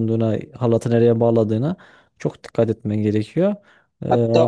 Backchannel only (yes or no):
no